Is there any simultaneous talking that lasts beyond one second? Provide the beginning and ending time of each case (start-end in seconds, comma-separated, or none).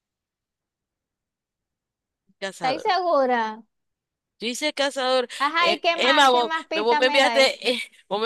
5.4-7.5